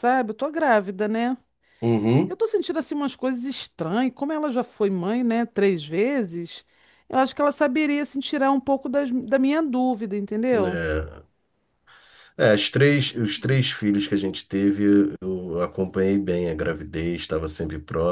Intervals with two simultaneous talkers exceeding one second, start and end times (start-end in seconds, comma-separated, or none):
none